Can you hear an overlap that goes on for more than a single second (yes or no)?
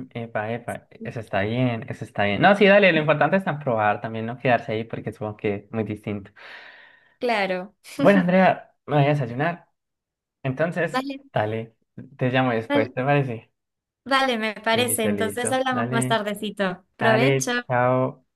yes